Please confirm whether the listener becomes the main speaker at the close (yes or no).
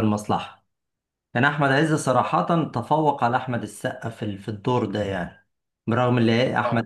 no